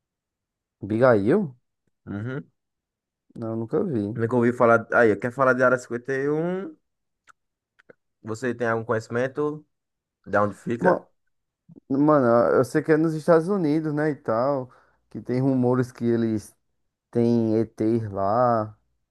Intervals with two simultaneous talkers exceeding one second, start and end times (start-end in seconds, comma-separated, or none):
none